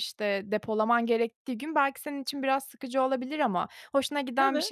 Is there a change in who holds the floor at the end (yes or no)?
no